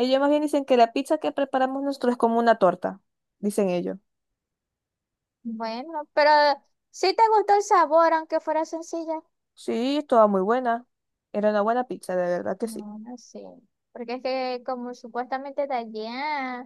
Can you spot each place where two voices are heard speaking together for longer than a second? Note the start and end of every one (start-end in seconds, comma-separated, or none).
none